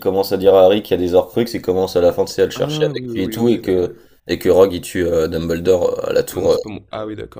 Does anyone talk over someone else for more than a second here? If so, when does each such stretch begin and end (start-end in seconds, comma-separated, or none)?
2.5-3.9